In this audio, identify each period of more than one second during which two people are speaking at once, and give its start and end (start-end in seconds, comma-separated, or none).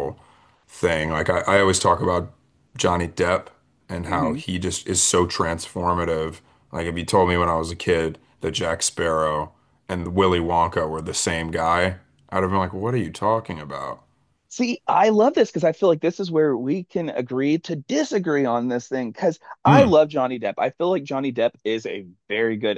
none